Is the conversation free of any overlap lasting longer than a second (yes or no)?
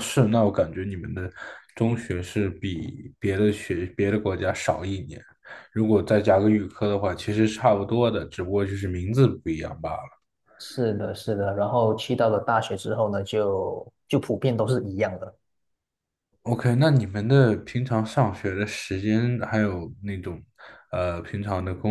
yes